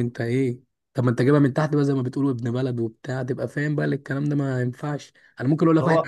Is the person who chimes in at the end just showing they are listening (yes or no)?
yes